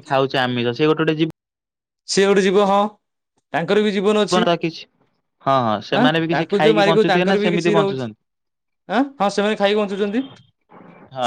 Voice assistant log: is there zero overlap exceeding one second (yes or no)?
no